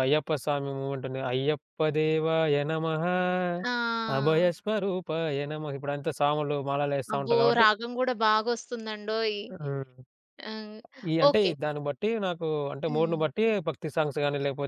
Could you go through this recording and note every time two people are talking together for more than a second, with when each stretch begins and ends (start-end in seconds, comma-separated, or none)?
none